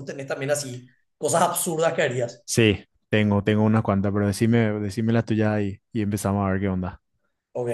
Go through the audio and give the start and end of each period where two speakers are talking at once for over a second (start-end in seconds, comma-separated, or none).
none